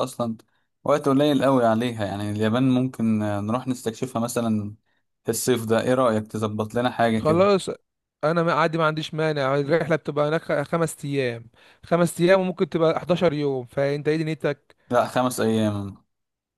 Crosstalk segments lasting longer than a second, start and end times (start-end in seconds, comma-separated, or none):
none